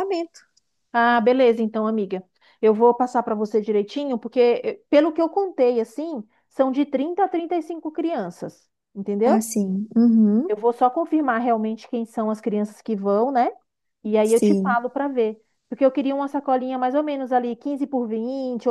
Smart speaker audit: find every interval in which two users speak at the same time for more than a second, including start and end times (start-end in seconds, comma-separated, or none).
none